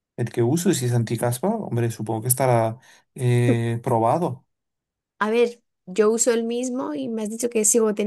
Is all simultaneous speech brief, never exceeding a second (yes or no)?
yes